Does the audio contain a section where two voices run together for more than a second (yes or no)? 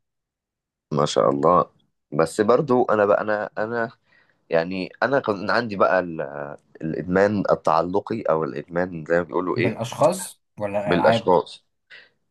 no